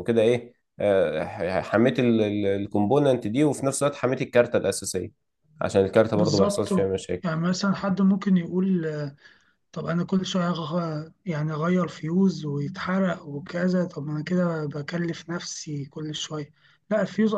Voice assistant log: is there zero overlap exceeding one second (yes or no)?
yes